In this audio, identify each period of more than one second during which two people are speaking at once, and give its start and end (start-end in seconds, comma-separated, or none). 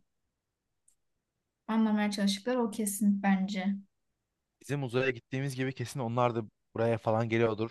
none